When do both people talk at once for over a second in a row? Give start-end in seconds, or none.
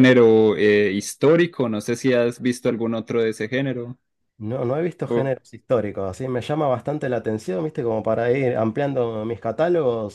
none